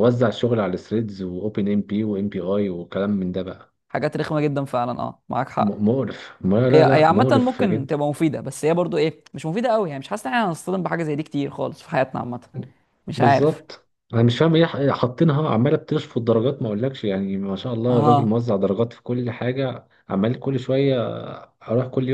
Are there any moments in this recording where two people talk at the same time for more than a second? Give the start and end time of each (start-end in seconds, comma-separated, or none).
6.7-7.9